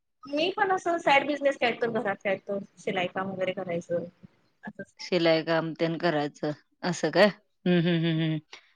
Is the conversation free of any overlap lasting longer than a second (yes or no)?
yes